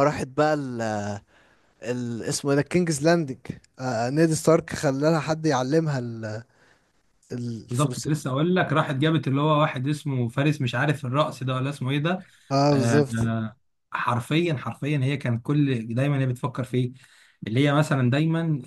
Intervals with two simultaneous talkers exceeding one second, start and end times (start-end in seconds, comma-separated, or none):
none